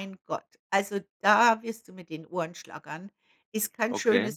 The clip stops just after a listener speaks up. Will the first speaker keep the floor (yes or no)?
yes